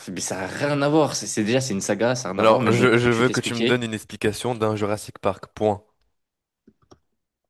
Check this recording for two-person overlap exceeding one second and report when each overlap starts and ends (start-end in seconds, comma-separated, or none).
2.4-3.8